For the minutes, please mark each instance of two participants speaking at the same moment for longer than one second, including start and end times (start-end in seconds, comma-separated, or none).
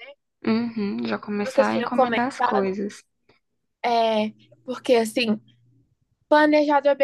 1.4-2.8